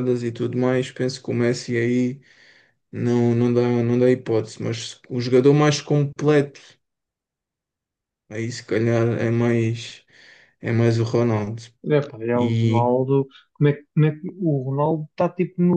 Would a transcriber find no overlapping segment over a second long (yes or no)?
yes